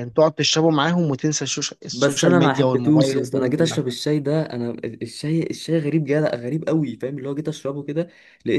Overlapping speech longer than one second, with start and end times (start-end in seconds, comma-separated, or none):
1.9-3.8